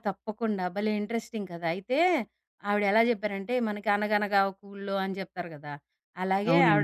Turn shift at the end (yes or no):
no